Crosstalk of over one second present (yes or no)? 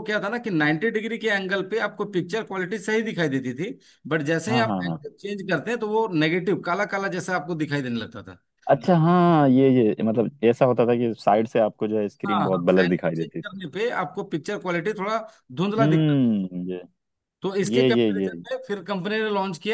yes